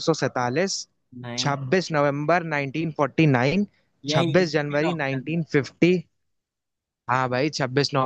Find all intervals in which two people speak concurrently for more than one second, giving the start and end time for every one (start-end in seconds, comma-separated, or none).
4.2-5.4